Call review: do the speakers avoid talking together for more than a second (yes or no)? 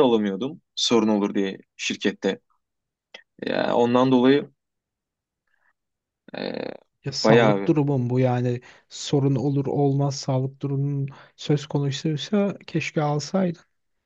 yes